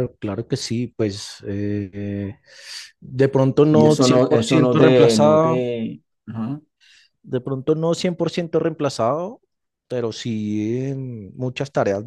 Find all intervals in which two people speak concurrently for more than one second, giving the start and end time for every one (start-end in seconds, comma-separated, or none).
3.7-5.7